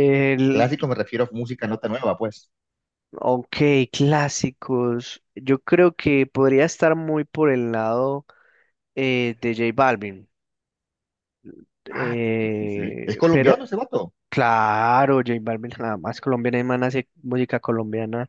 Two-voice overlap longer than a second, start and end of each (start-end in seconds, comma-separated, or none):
11.9-13.6